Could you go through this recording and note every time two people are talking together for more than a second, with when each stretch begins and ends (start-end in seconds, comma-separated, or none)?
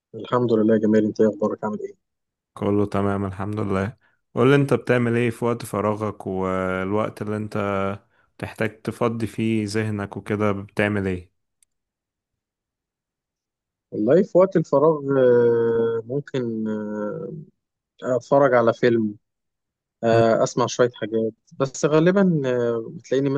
none